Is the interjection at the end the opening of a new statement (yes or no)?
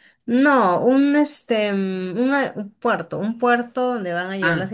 no